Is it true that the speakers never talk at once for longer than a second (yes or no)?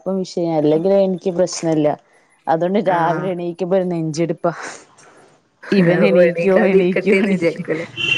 no